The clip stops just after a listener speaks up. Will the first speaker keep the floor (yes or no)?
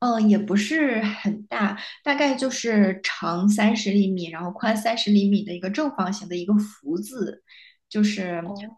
yes